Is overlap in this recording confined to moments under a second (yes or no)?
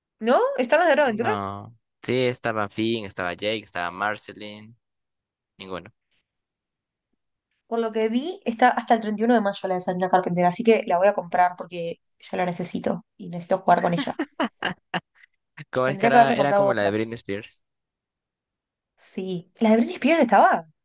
no